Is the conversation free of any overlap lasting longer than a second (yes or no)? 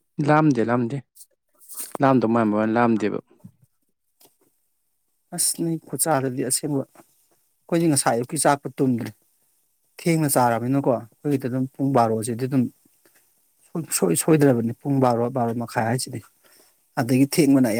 yes